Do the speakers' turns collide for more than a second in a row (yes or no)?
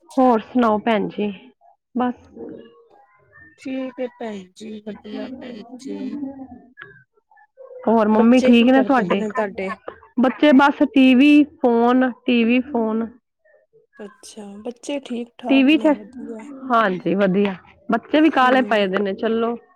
no